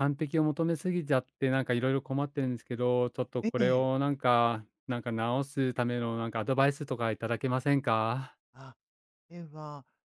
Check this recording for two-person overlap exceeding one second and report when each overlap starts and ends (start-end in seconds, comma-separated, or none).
none